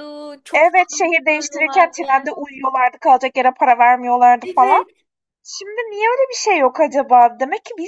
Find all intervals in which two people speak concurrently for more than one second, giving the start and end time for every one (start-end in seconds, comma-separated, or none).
0.5-2.0